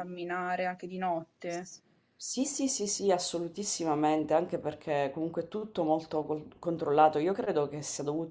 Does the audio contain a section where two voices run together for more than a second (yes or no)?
no